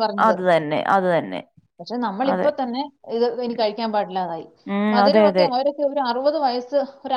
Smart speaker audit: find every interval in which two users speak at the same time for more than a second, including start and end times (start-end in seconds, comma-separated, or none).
none